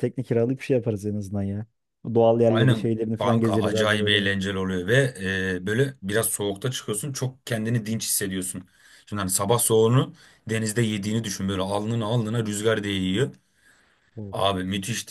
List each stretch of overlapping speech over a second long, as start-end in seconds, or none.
2.5-4.3